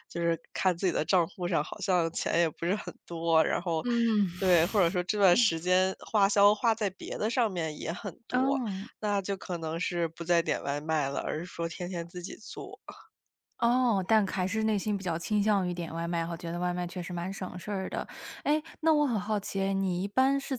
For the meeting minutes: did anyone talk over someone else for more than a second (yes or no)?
no